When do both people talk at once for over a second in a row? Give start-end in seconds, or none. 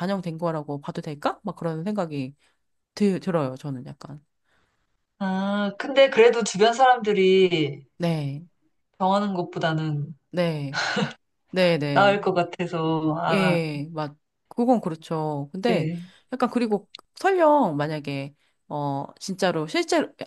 none